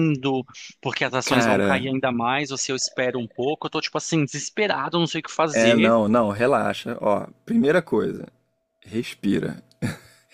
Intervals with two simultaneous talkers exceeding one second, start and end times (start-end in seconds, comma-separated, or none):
none